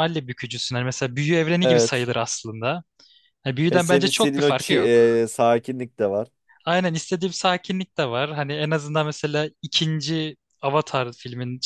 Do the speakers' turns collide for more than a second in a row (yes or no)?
yes